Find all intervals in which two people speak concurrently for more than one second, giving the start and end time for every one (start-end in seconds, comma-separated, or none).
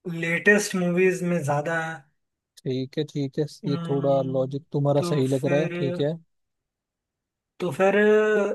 3.6-6.0